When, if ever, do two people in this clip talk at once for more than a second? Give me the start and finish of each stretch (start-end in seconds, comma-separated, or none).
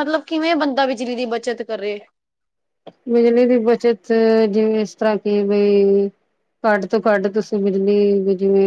none